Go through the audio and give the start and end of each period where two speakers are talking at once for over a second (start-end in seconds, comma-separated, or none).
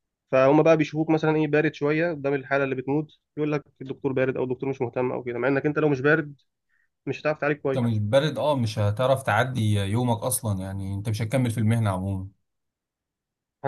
none